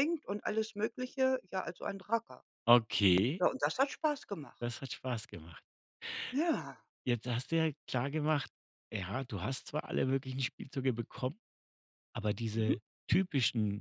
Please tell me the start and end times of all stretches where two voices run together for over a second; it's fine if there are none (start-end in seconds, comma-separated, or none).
none